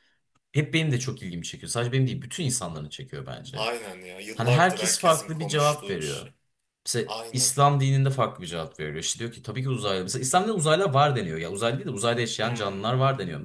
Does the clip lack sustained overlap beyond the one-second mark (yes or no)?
no